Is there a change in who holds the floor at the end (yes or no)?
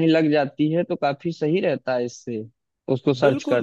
yes